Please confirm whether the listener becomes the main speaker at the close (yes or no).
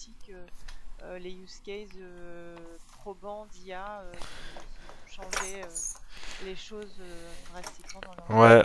yes